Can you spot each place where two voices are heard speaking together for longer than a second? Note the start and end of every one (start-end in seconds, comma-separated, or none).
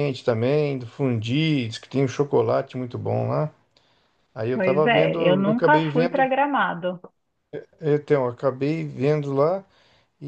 4.5-6.3